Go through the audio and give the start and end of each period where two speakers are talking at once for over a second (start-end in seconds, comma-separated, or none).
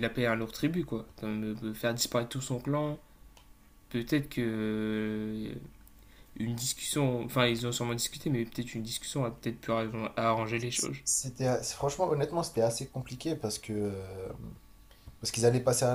none